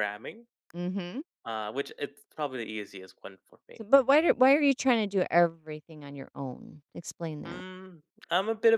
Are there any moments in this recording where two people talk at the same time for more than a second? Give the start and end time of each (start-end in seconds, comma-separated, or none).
none